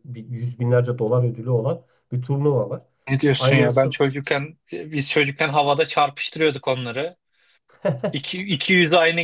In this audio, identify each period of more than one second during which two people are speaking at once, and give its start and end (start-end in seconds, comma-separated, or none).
none